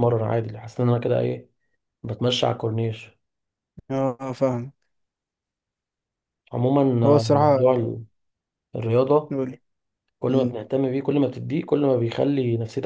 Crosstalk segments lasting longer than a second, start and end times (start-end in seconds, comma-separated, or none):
none